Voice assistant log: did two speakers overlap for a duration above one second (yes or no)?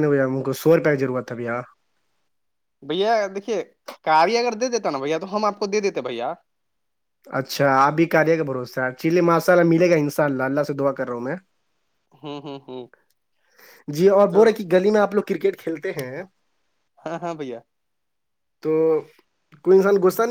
no